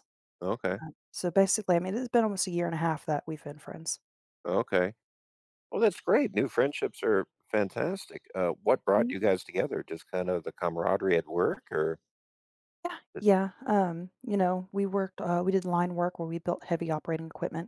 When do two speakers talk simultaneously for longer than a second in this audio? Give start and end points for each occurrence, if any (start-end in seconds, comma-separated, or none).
none